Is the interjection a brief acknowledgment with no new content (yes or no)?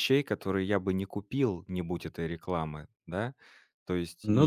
yes